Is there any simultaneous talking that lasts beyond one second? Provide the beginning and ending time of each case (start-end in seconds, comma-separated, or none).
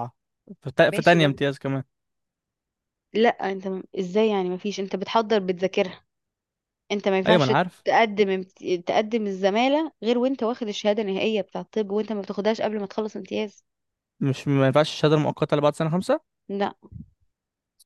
none